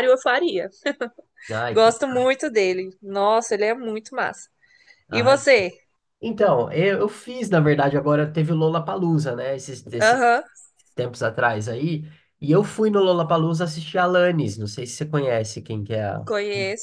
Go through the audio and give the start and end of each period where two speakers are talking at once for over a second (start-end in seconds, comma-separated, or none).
none